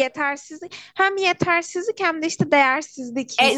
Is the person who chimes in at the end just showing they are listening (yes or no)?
no